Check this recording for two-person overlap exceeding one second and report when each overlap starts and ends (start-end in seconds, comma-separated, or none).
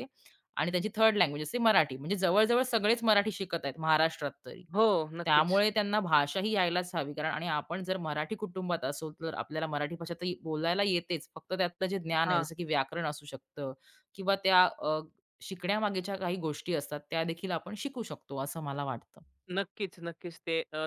none